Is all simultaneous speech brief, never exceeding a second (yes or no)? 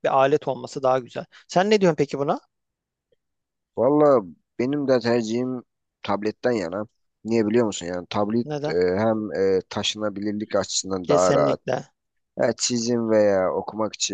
yes